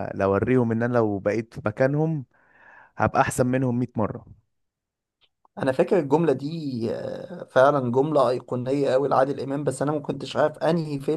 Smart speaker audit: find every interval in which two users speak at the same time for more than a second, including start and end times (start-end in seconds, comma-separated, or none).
none